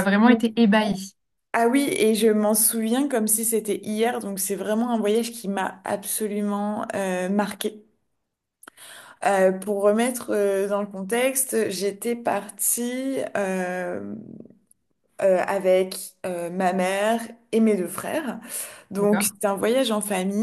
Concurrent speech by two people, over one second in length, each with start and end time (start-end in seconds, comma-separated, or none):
none